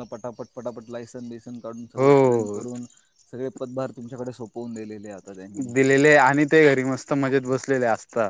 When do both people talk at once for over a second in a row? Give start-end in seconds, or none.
none